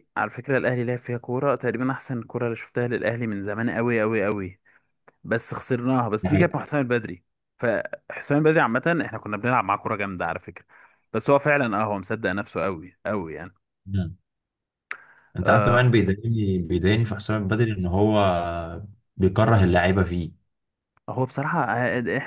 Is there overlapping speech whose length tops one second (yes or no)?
no